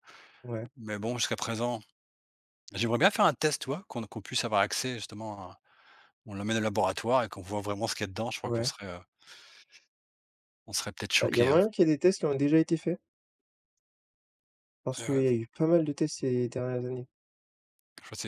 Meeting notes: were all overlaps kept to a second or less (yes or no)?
yes